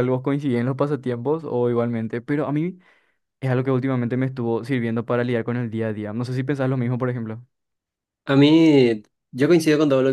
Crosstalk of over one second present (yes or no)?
no